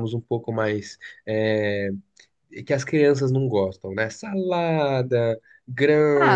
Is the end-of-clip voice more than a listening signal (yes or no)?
yes